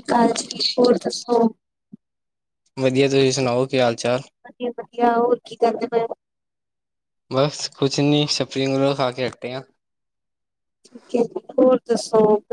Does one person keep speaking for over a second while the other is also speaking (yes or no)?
no